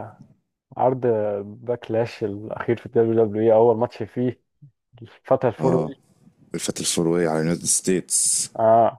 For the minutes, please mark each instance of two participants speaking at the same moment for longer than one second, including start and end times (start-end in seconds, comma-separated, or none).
none